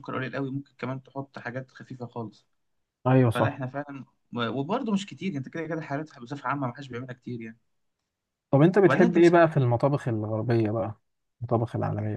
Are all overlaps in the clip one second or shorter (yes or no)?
yes